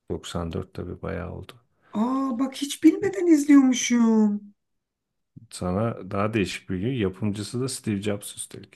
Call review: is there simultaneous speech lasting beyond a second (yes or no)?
no